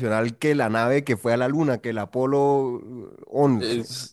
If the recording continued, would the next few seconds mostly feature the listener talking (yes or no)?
yes